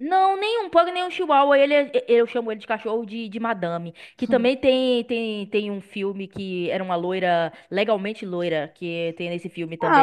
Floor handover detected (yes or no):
yes